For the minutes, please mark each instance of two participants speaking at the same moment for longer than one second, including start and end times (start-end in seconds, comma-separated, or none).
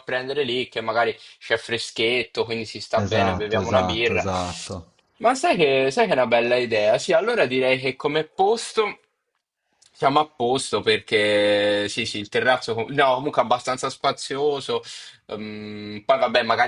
3.0-4.2